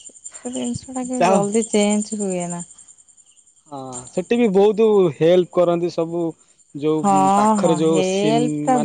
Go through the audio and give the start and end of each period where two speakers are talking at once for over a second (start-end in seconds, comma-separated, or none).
none